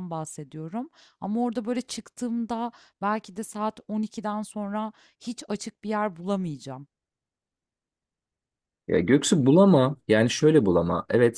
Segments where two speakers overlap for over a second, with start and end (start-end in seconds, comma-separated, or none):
none